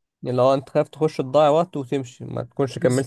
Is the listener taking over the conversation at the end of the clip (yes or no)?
yes